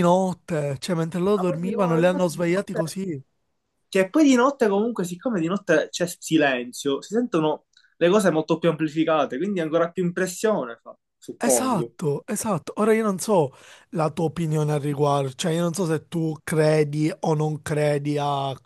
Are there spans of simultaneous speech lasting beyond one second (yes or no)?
yes